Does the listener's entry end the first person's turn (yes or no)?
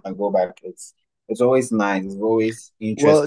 yes